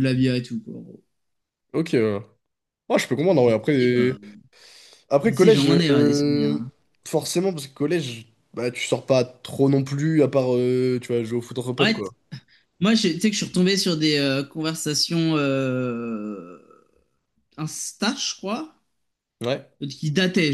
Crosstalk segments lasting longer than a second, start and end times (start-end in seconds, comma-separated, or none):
5.2-6.6